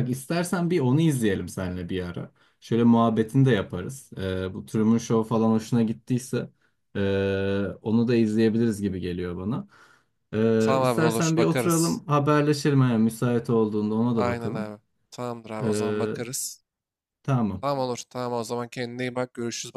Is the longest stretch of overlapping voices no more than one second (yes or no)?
no